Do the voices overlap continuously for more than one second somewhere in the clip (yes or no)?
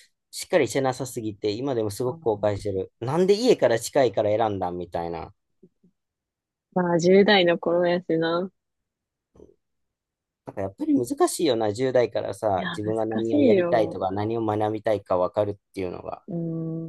yes